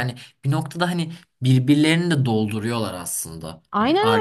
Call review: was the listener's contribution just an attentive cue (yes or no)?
yes